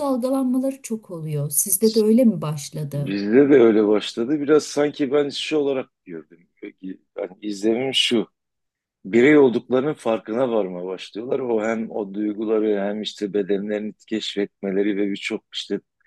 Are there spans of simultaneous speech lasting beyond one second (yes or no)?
no